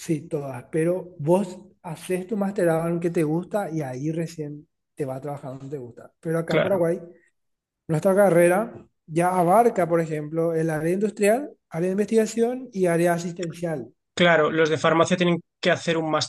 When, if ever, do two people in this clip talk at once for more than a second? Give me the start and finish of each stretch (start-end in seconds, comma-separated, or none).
none